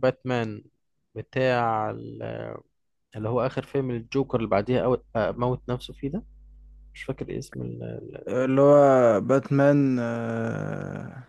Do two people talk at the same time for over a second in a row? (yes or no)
no